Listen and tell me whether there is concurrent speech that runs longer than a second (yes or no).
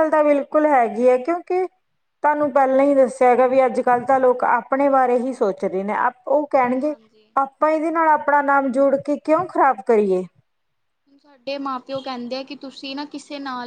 no